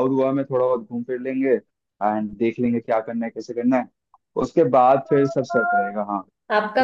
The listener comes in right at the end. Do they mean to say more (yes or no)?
yes